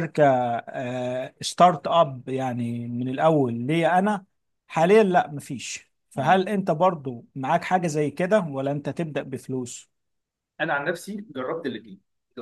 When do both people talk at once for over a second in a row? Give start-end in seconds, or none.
none